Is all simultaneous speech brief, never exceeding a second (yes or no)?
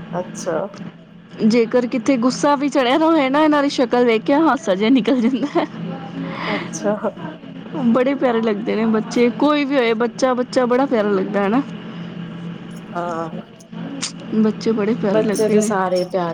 yes